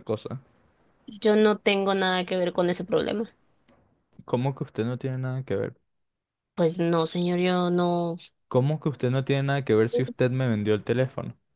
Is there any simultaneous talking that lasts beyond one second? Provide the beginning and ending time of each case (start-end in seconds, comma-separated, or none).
none